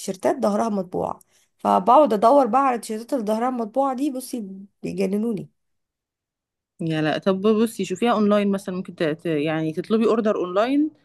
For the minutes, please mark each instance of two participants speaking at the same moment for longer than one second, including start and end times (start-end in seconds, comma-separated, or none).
none